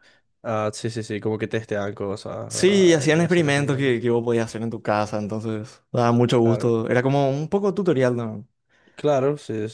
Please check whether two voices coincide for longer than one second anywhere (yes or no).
yes